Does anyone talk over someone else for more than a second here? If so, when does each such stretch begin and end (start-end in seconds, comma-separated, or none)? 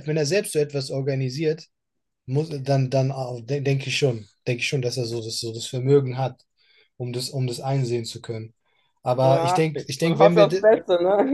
9.2-10.6